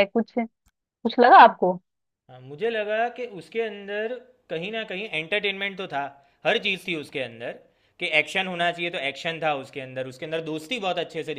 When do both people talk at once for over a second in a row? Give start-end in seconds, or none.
none